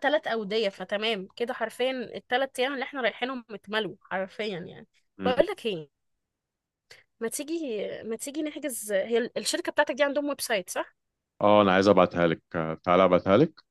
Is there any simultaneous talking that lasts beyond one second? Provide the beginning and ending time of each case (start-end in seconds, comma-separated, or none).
none